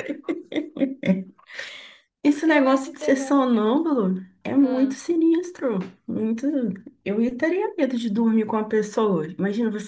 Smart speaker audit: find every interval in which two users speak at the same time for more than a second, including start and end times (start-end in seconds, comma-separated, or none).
2.4-3.7